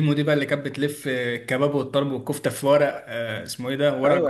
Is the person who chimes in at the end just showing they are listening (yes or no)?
no